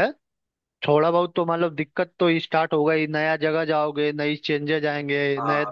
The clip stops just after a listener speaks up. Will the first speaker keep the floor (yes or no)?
yes